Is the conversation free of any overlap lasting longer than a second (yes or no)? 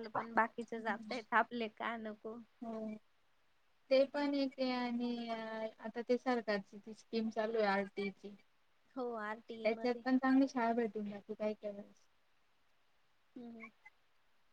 yes